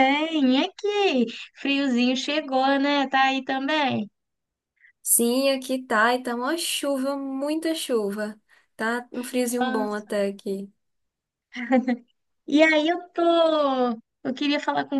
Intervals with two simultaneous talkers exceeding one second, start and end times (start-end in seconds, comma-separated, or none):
none